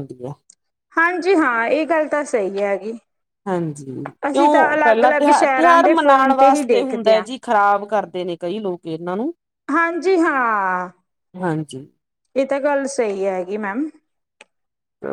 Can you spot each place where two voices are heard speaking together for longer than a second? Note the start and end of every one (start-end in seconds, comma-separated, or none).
4.3-7.2